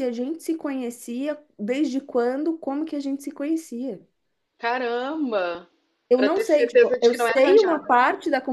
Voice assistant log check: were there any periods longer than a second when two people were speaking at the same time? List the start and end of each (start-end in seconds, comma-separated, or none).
6.2-7.9